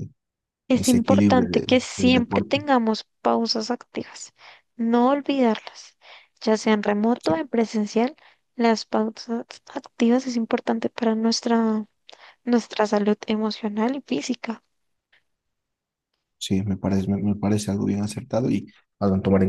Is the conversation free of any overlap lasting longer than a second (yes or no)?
no